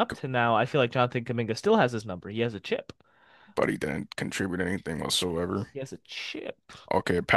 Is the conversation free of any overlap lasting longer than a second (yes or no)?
yes